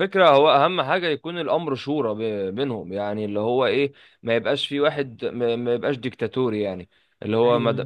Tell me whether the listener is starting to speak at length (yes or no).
no